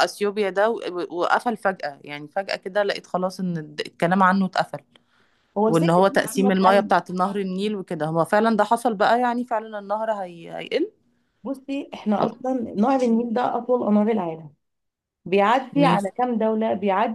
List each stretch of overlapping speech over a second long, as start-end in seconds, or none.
5.7-6.9